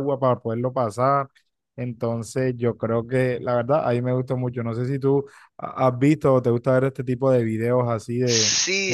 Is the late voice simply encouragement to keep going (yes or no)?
no